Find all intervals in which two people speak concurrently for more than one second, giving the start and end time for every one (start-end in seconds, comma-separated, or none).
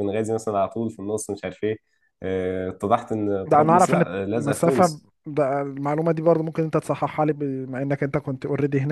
3.5-5.1